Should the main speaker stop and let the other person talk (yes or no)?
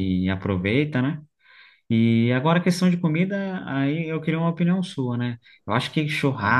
no